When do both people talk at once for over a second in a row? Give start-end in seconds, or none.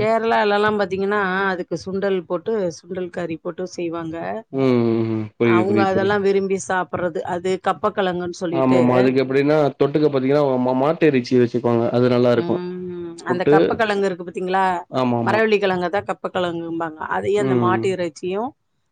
none